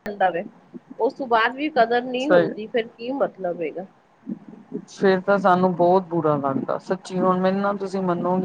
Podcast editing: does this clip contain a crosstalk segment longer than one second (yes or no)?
no